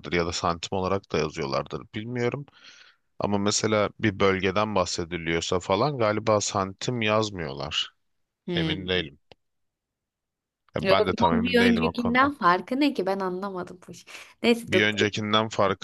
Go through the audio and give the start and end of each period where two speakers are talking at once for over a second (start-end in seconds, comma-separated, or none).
10.8-12.3